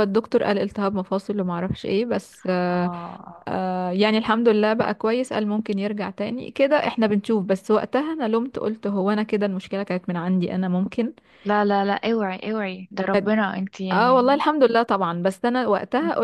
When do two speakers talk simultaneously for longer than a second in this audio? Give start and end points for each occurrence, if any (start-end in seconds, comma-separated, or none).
none